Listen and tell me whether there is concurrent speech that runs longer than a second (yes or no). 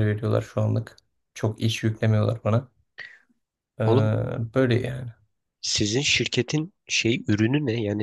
no